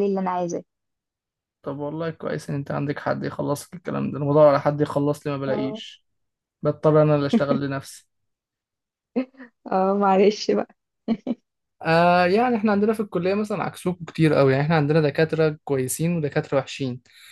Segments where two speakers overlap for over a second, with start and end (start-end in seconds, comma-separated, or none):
none